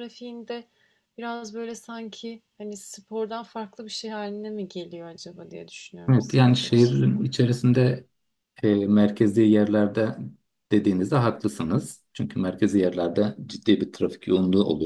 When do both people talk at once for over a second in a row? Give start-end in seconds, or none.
6.1-7.3